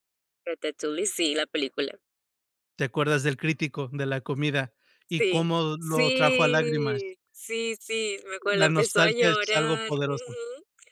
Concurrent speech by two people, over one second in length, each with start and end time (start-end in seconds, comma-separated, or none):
5.2-7.1, 8.5-10.3